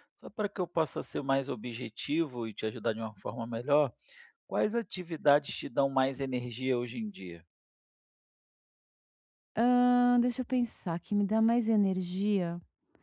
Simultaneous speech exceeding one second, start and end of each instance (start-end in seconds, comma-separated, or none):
none